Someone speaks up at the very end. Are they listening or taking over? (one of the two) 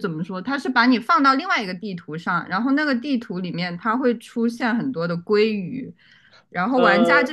listening